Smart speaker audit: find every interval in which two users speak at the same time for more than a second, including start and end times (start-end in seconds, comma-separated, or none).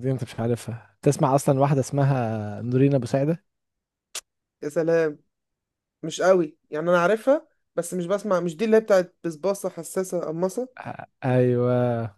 none